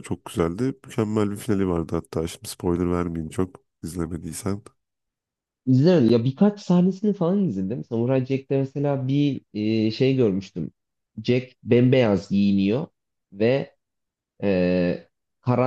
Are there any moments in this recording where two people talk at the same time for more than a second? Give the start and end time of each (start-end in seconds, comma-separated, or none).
none